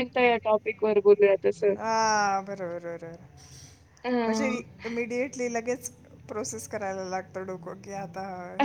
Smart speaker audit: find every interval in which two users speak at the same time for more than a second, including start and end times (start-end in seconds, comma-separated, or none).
none